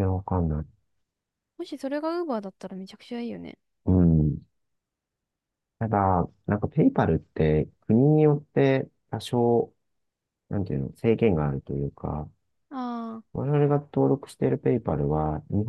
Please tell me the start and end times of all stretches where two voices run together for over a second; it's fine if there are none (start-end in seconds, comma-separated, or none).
none